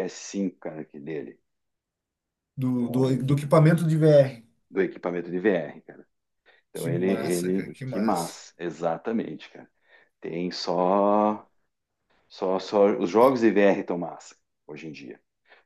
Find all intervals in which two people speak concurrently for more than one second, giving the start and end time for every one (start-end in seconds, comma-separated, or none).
6.7-8.4